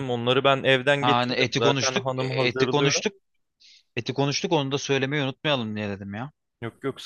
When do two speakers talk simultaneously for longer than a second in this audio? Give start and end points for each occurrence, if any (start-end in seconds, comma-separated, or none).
1.0-3.0